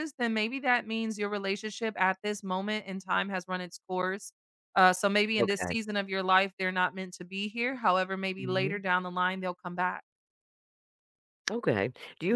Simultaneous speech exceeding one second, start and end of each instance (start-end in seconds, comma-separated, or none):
none